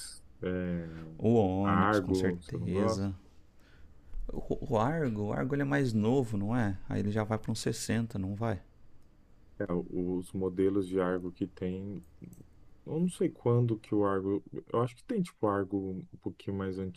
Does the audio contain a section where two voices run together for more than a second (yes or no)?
yes